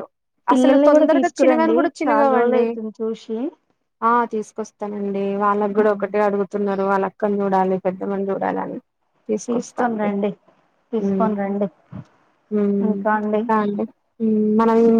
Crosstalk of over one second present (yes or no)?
yes